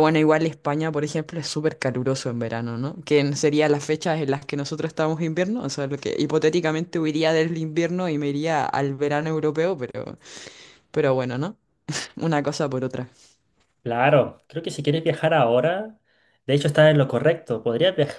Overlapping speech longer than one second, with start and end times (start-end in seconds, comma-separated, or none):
none